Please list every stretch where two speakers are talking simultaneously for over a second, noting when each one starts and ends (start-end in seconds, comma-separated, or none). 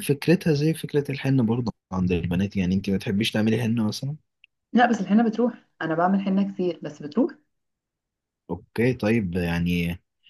none